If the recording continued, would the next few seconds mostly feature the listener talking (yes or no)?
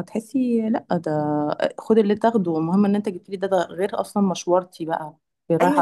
yes